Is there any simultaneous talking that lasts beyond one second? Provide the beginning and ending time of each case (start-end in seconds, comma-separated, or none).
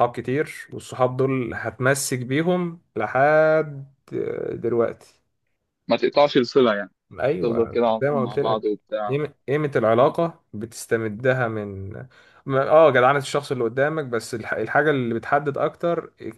7.4-9.2